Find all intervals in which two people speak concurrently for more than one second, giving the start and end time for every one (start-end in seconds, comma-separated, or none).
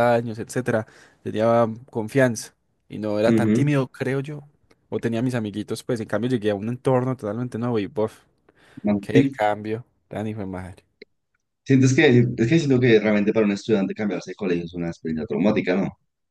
none